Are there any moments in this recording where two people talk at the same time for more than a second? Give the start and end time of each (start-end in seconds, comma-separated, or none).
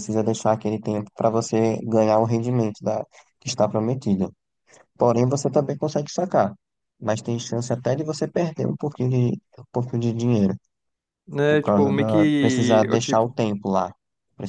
11.5-13.2